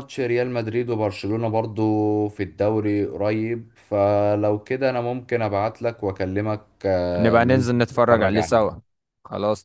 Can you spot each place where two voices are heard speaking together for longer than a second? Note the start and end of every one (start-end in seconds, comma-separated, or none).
7.2-8.8